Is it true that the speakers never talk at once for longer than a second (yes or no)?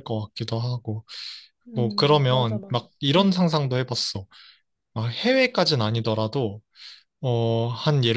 no